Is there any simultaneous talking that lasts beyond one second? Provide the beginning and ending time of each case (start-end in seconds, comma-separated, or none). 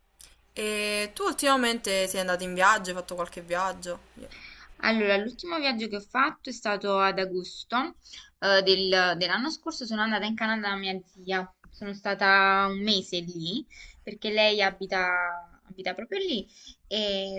none